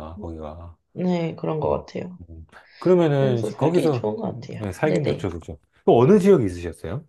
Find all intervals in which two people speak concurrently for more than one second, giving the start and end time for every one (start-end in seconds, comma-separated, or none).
3.2-5.3